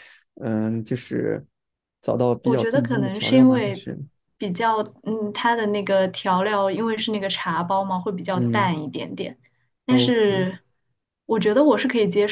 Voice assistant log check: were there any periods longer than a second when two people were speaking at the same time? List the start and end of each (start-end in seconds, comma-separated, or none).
2.4-3.9